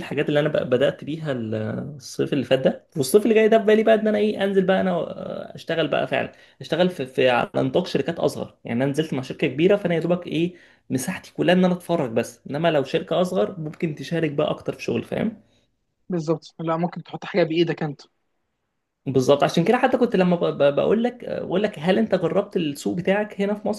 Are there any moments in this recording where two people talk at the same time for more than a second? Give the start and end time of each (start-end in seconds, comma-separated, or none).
none